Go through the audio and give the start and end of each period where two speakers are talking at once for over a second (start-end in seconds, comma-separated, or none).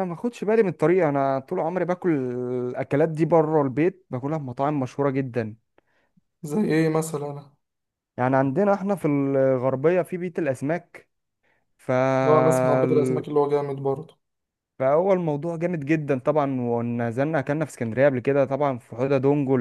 none